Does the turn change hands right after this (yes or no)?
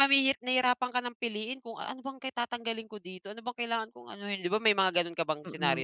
yes